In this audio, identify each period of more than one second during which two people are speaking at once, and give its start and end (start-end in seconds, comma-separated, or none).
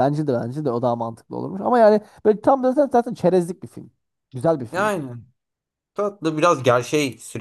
none